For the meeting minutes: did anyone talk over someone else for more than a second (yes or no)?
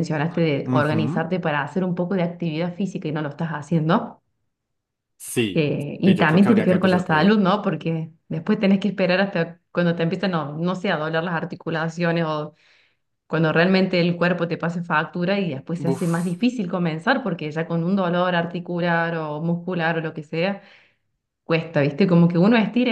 yes